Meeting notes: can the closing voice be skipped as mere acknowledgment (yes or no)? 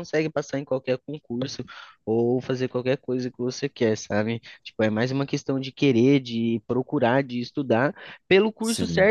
yes